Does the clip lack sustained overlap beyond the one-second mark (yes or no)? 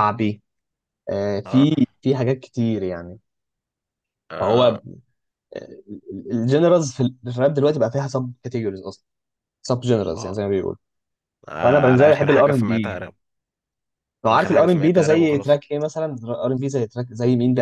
no